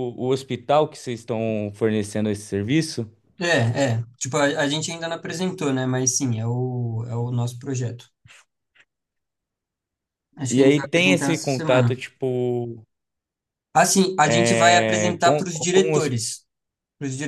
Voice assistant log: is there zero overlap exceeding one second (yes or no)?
no